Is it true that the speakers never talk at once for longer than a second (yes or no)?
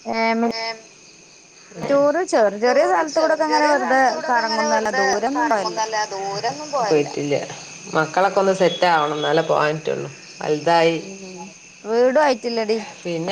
no